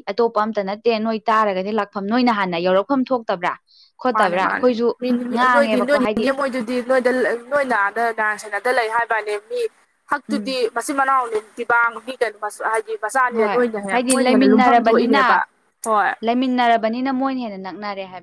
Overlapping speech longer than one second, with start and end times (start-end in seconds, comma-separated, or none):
13.4-15.2